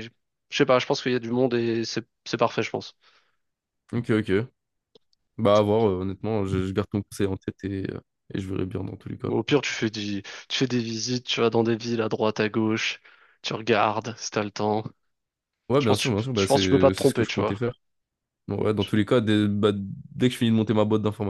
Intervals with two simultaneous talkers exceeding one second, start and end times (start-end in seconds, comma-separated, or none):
15.8-17.6